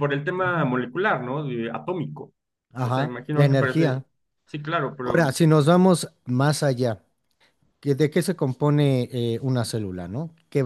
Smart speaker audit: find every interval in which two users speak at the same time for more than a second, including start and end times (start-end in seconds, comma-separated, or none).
2.8-4.0